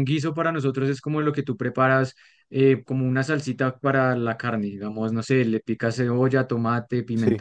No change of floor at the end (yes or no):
yes